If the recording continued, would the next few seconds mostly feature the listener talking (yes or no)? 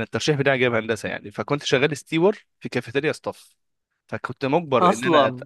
no